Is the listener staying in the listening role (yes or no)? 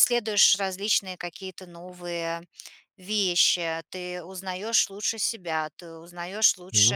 yes